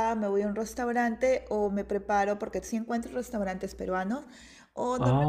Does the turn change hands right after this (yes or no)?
no